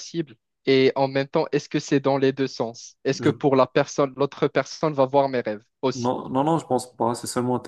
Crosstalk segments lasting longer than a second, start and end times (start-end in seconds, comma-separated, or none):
none